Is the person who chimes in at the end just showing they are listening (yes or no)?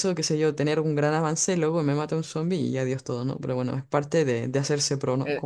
no